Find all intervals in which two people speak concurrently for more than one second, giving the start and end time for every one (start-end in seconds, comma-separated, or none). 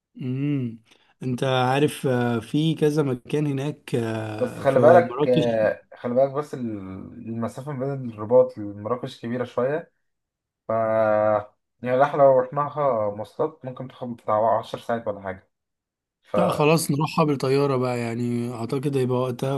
4.4-5.6